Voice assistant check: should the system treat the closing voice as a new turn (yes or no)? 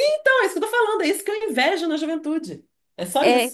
yes